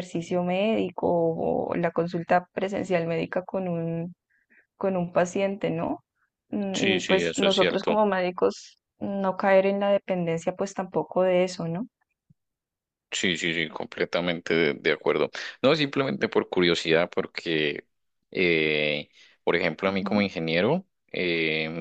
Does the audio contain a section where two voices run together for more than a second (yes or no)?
yes